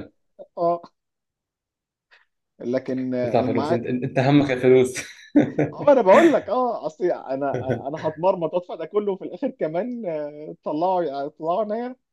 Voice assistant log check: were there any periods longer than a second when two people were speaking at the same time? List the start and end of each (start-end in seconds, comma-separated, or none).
none